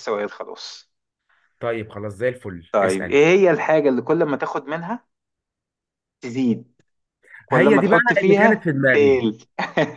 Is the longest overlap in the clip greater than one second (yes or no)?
yes